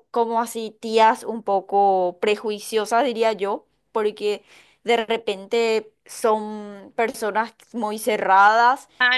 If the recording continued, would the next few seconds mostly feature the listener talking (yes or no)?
yes